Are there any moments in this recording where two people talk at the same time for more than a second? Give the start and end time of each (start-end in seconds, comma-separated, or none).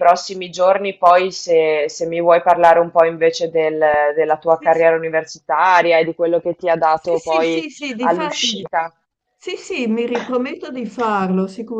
6.9-8.7